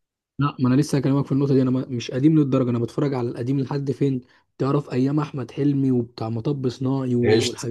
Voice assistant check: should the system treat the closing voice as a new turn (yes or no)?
yes